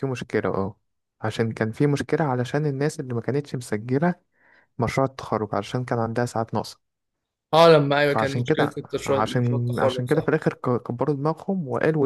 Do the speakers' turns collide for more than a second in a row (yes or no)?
yes